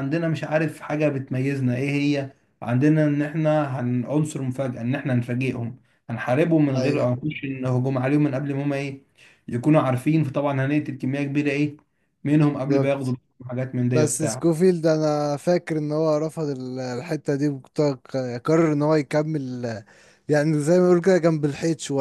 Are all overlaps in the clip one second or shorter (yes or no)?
yes